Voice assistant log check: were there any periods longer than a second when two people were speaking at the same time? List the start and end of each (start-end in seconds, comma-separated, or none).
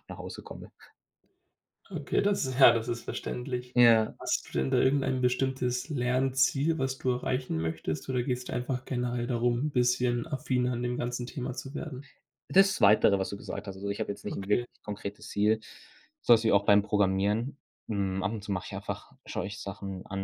none